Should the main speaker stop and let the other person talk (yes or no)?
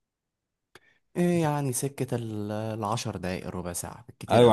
yes